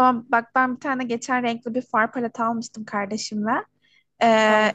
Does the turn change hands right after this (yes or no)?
no